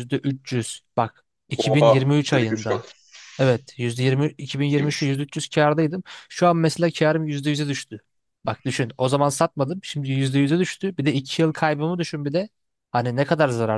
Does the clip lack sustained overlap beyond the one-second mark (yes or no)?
no